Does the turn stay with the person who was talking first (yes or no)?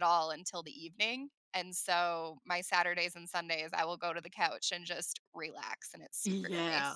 no